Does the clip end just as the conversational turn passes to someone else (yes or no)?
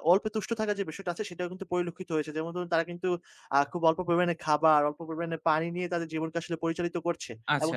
yes